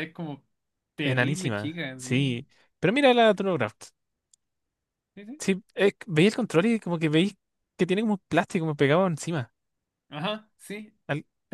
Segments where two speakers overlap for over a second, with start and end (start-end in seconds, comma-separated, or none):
1.0-2.3